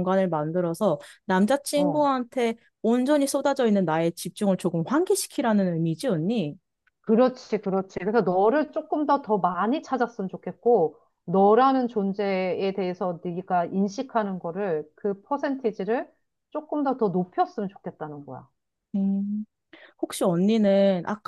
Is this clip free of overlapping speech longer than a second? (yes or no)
yes